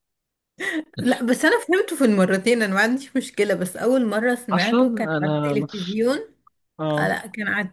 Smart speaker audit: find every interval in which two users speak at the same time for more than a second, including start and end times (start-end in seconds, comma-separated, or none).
4.5-6.0